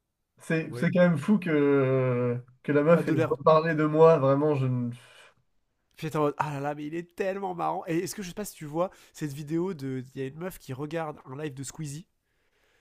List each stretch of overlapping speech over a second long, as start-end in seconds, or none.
none